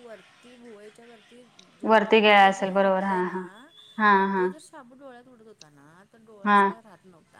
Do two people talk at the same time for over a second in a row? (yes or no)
yes